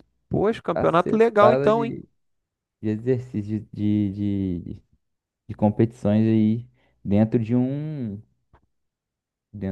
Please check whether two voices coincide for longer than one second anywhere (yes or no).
yes